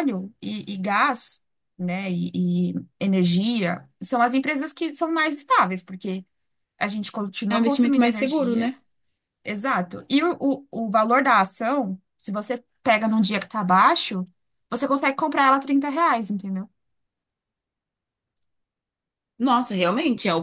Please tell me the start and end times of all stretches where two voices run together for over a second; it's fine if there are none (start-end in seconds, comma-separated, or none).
7.5-8.7